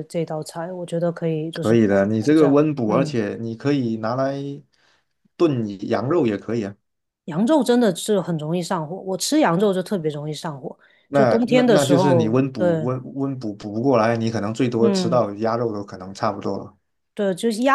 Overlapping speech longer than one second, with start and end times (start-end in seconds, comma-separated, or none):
1.5-3.2, 11.1-12.9